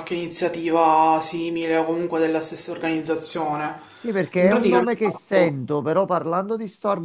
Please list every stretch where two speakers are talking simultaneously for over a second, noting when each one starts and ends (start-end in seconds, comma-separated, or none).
4.3-5.5